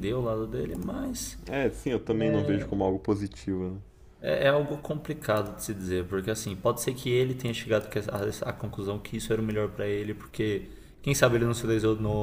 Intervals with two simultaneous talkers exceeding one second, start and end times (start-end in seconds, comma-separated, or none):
none